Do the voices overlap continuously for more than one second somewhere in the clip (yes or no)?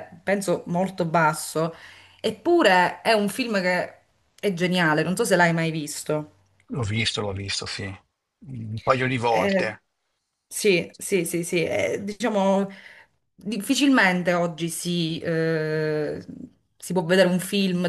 no